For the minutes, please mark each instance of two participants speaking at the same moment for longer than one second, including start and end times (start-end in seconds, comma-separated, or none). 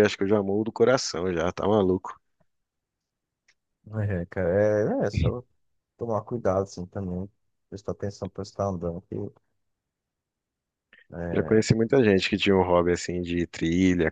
none